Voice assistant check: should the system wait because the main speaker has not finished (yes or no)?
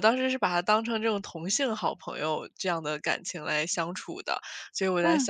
yes